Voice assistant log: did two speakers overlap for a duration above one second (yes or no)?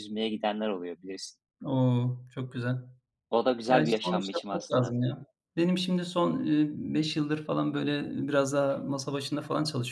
yes